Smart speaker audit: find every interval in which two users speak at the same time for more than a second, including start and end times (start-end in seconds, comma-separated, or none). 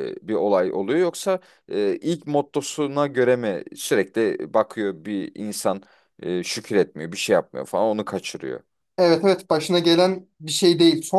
none